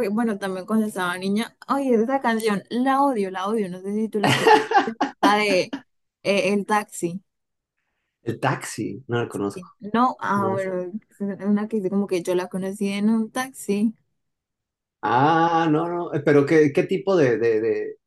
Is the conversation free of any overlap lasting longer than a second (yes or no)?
yes